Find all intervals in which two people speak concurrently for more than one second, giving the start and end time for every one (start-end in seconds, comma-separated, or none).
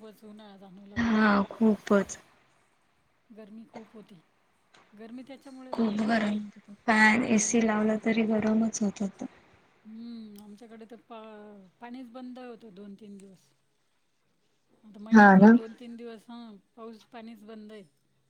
none